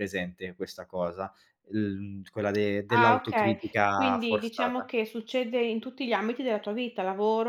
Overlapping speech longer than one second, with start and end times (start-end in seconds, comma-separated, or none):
2.9-4.9